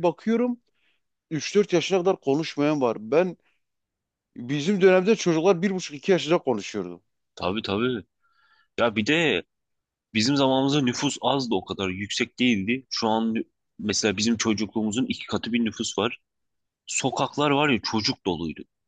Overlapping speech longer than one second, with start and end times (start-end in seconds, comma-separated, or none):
none